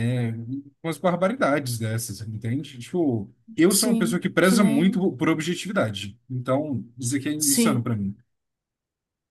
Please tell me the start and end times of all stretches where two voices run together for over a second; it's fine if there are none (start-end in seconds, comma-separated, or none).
3.7-5.1